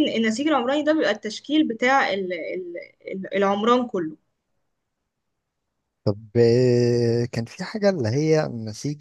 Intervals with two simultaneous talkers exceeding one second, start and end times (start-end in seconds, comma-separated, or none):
none